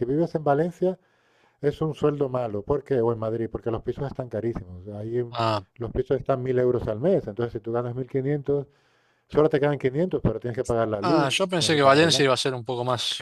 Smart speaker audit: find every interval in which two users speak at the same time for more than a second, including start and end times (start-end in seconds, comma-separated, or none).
11.0-12.3